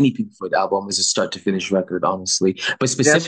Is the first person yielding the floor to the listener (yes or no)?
no